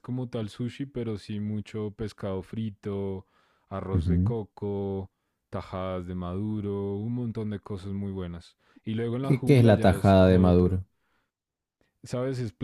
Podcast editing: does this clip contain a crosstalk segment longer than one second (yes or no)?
yes